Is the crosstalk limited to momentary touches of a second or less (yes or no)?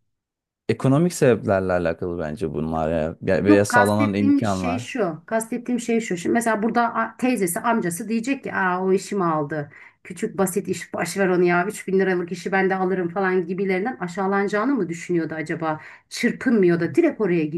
no